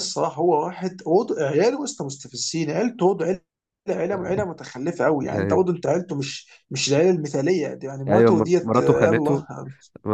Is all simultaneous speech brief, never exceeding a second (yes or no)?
no